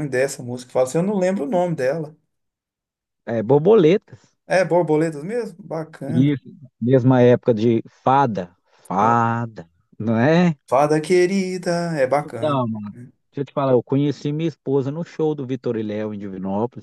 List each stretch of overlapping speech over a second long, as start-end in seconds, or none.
none